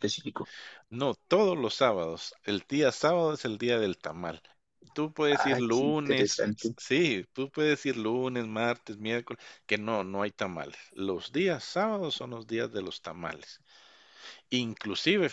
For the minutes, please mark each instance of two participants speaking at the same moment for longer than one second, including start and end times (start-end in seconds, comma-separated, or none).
5.3-6.8